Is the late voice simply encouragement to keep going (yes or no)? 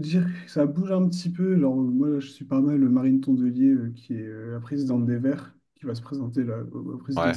yes